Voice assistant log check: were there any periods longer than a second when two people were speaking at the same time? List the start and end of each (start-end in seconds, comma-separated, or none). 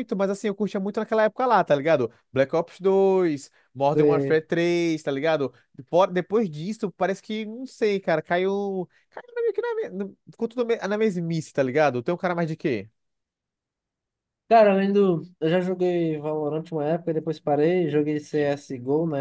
none